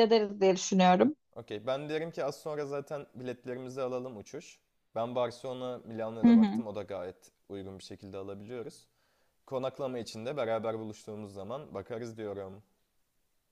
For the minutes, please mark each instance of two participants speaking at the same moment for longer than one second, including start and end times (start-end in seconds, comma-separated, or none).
none